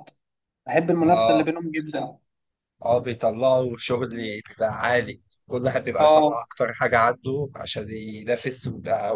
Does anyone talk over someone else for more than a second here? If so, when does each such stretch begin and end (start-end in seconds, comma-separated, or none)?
none